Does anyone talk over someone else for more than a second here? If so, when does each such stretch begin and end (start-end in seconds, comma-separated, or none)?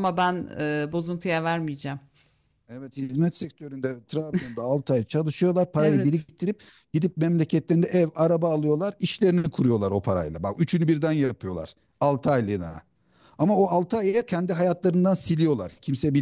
none